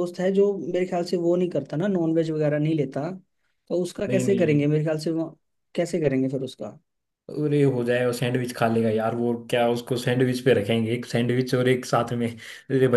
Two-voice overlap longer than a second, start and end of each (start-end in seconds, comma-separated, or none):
none